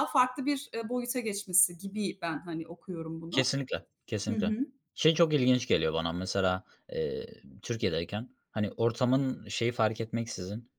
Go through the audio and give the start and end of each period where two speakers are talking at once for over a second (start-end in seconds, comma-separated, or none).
none